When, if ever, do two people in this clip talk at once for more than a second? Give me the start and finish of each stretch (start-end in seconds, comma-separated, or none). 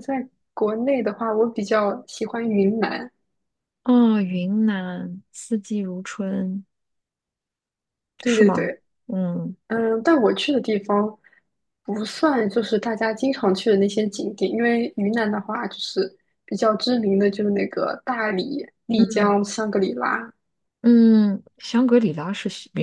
none